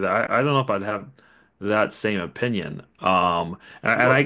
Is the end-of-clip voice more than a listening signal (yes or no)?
no